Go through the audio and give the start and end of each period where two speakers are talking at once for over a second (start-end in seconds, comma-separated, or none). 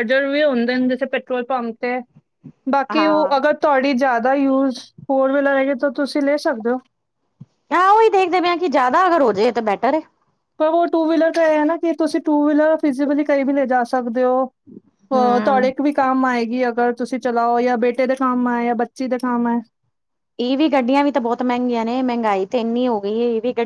none